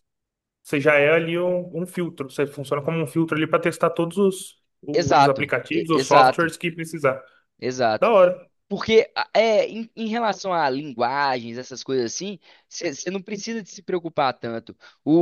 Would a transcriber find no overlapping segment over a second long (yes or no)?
no